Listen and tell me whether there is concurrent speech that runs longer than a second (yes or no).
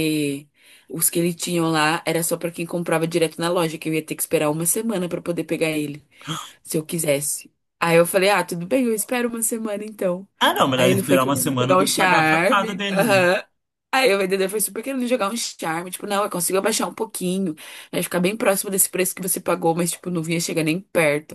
yes